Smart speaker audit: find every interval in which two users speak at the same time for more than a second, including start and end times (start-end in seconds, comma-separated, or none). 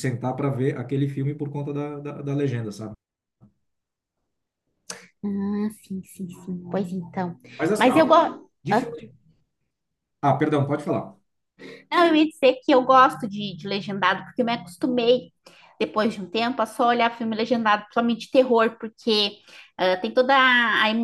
none